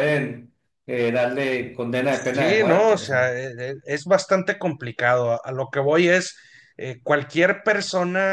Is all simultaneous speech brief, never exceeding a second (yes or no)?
no